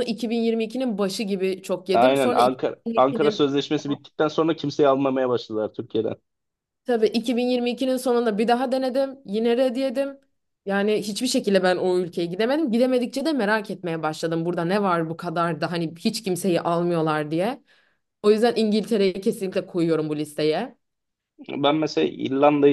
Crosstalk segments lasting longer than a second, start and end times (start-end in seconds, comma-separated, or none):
1.9-3.5